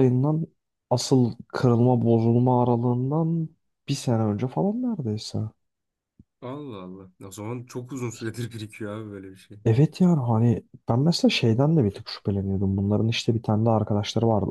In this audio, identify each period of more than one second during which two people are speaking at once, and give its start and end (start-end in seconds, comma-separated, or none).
none